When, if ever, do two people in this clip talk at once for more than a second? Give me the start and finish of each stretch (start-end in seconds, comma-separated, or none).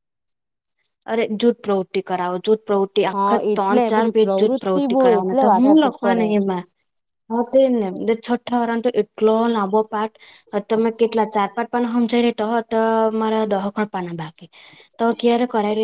3.2-6.2